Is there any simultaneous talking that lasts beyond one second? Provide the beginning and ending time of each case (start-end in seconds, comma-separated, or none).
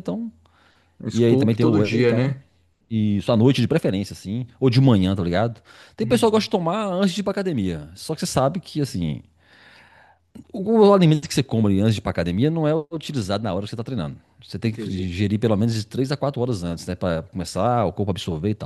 1.1-2.3